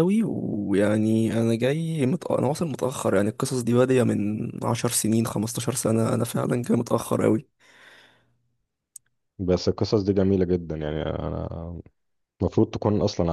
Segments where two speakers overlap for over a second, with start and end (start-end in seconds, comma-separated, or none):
none